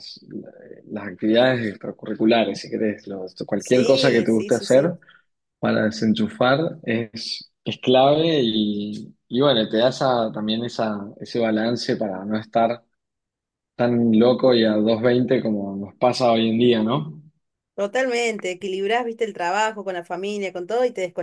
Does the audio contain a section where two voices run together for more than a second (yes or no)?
yes